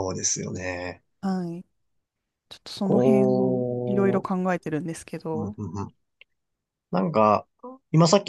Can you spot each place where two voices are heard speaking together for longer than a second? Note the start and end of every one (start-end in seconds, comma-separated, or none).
2.8-4.3